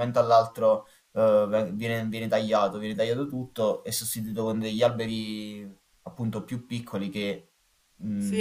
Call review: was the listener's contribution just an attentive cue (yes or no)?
no